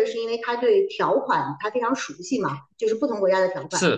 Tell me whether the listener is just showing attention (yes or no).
yes